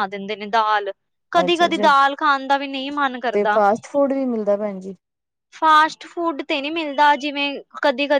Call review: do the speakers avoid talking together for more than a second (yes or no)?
yes